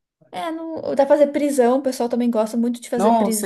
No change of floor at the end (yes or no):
no